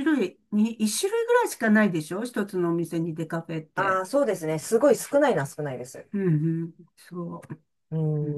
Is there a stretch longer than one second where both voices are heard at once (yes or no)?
no